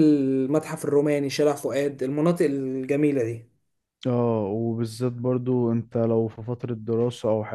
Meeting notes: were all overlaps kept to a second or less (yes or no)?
yes